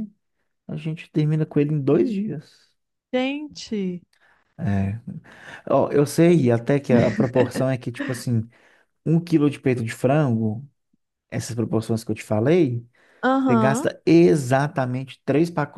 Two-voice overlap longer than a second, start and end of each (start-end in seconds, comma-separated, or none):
none